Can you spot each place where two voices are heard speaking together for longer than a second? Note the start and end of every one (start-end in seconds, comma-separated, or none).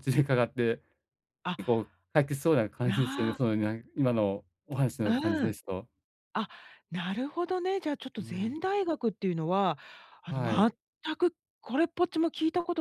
none